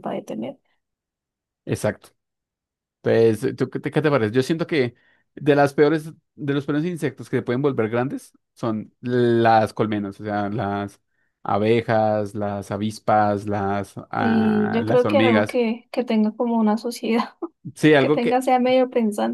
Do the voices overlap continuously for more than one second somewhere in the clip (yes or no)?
yes